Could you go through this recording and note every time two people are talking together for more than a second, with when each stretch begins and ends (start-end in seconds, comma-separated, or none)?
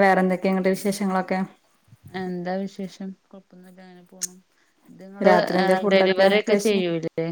5.3-6.8